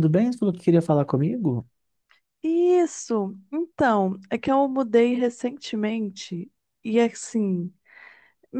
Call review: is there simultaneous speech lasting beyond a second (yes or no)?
no